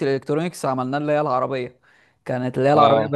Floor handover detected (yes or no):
no